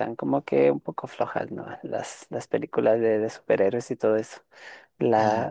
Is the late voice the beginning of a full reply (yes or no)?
no